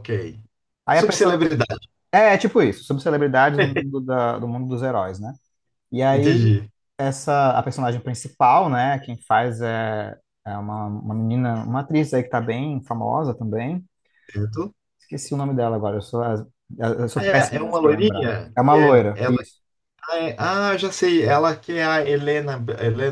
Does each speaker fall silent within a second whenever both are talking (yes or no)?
no